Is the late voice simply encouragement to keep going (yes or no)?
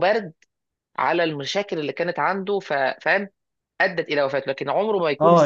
no